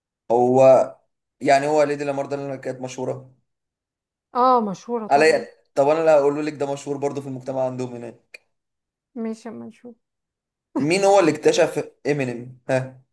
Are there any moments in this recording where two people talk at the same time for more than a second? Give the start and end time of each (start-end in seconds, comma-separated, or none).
none